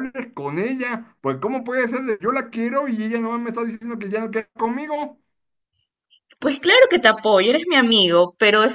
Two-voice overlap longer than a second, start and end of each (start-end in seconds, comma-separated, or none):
none